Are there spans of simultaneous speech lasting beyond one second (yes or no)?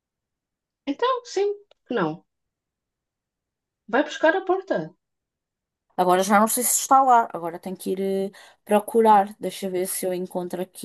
no